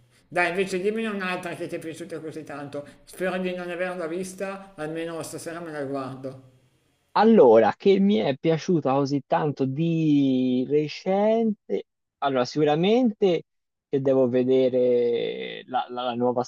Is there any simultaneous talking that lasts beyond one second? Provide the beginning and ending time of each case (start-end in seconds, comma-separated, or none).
none